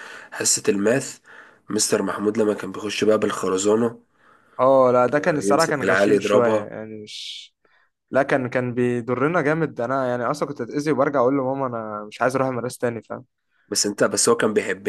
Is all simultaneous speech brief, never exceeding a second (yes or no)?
no